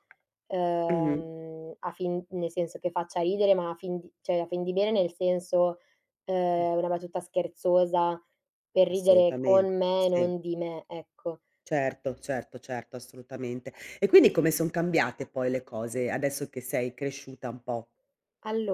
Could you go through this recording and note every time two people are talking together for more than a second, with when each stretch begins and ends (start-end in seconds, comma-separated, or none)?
8.9-10.3